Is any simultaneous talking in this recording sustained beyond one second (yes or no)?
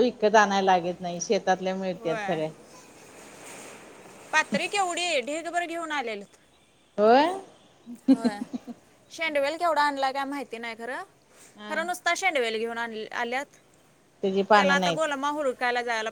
no